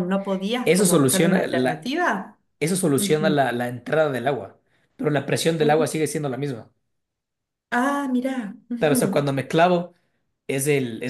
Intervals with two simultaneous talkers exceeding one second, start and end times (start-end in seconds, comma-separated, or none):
0.7-1.9